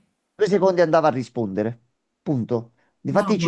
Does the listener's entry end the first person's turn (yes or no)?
no